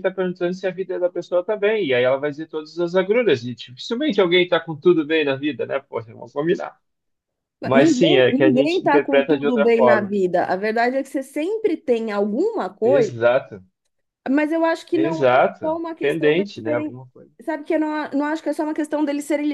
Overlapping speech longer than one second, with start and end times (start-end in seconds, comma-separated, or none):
7.7-10.1, 14.9-16.9